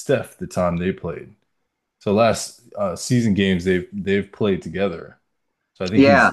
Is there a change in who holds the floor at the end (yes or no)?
no